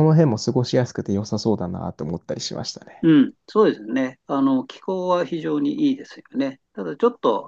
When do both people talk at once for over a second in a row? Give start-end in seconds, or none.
none